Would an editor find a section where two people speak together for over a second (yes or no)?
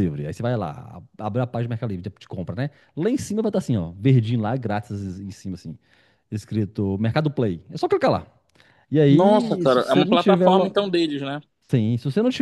yes